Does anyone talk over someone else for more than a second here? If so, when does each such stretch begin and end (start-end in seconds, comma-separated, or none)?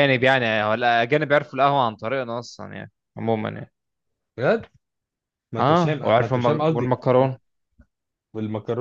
5.6-7.0